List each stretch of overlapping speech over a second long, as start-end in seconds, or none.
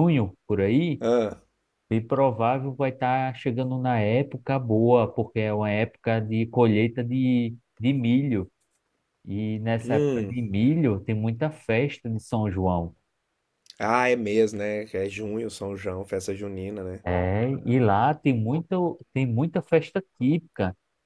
none